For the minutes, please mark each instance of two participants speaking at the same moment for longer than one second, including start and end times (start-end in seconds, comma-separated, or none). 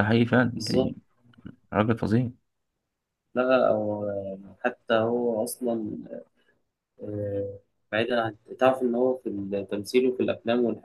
none